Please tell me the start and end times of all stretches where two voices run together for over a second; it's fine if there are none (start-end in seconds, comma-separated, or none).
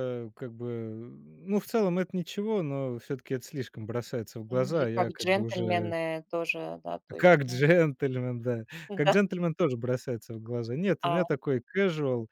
4.5-5.9